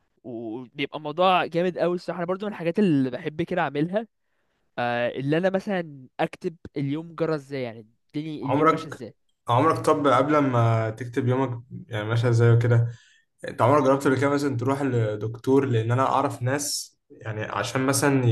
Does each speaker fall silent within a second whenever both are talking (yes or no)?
yes